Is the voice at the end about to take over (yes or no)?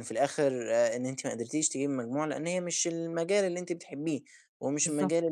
no